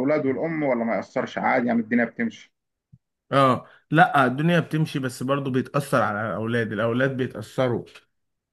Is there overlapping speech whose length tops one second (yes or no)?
no